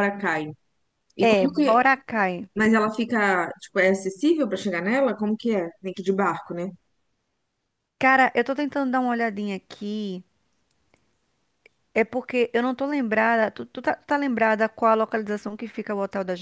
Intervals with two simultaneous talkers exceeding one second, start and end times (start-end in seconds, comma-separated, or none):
none